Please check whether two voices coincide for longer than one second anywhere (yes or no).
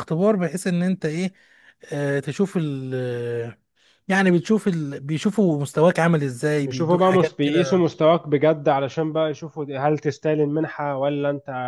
yes